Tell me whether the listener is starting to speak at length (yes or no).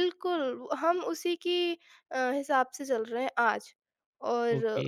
yes